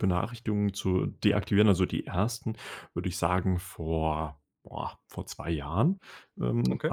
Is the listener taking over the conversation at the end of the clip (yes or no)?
no